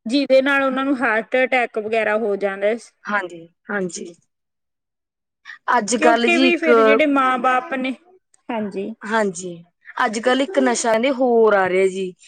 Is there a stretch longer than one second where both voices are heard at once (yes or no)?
no